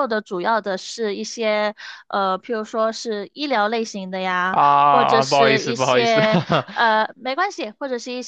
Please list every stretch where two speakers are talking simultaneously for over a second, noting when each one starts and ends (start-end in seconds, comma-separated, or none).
4.5-6.2